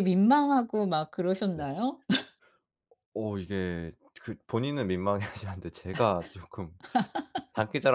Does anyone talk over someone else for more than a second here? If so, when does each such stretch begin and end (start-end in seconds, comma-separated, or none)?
none